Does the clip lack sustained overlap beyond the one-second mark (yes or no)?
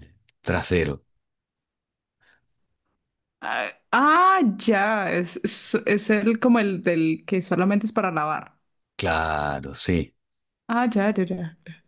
yes